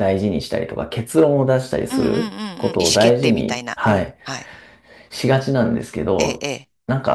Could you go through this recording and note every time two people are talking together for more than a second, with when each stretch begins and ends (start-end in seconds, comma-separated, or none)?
1.9-4.2